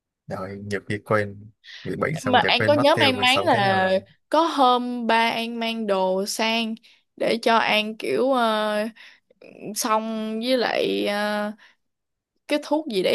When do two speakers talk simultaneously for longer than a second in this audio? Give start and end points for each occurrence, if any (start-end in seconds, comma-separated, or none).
2.2-3.9